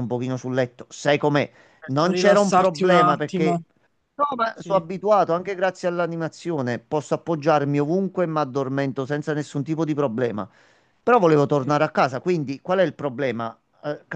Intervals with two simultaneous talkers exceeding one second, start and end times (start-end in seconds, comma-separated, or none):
1.9-3.6